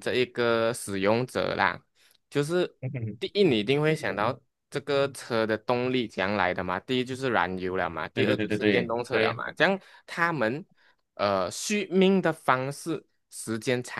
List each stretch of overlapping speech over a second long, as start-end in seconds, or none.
8.1-9.4